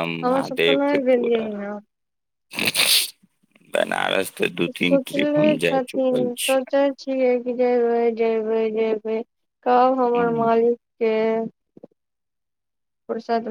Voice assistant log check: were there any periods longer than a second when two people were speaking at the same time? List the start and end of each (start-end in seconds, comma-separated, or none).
4.7-6.6